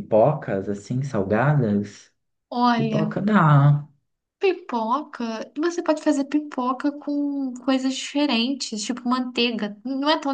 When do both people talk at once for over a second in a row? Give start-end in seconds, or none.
none